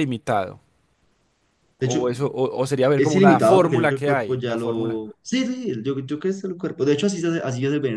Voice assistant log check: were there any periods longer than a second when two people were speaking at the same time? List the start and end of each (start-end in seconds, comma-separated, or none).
3.0-5.0